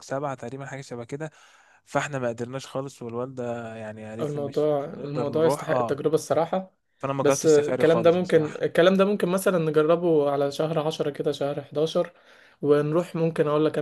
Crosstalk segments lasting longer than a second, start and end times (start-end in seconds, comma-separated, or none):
4.2-6.0, 7.2-8.6